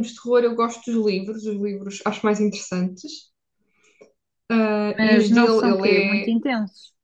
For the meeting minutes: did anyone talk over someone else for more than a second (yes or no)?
yes